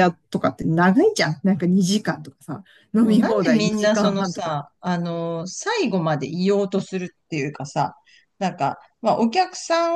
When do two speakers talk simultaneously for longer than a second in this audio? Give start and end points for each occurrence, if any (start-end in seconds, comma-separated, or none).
3.0-4.7